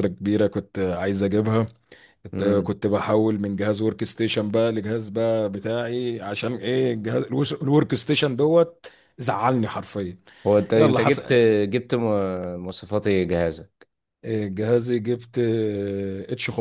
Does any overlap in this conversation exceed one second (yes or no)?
no